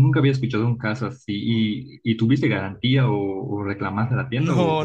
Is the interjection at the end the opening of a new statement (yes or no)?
yes